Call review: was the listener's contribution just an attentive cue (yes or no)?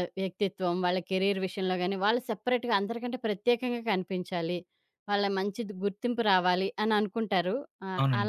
no